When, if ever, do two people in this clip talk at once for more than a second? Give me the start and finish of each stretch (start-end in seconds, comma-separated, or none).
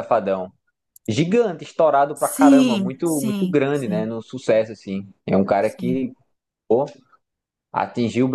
2.1-4.1